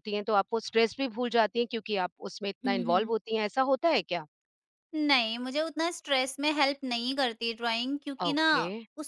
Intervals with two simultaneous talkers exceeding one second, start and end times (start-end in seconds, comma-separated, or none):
none